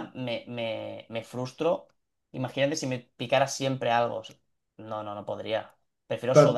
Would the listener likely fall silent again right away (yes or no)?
yes